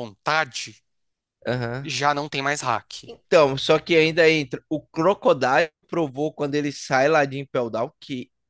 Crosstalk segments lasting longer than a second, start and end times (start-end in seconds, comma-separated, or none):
none